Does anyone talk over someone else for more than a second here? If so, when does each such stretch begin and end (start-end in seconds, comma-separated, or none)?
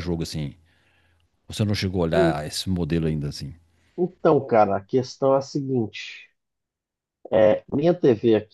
none